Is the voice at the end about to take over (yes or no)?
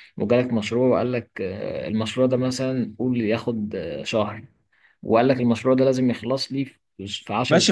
yes